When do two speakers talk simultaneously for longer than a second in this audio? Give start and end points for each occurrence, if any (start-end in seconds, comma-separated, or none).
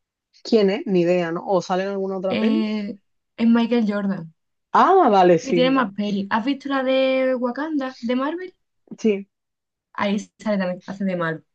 none